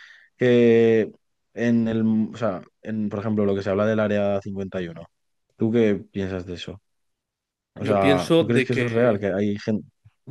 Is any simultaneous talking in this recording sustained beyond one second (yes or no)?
yes